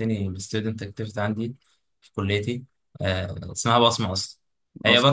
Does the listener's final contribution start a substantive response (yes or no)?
no